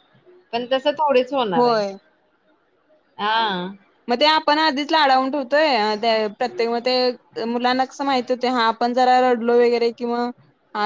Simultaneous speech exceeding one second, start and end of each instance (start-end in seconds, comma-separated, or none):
none